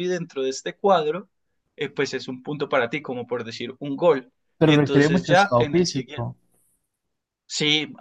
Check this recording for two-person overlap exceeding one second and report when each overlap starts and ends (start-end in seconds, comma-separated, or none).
4.6-6.3